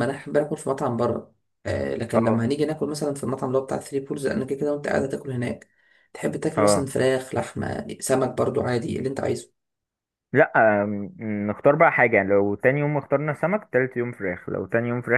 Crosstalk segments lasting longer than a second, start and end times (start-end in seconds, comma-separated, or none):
none